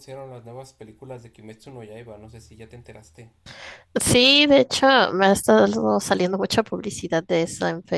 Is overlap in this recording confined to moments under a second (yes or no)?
yes